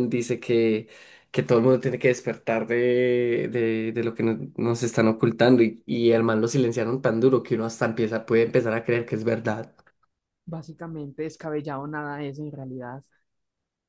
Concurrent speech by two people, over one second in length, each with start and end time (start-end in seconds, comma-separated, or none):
none